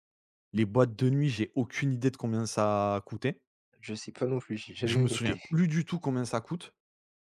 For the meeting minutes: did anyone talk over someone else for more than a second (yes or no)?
no